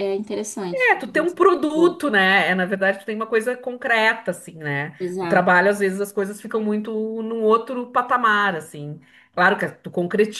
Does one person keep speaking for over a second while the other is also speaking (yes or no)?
no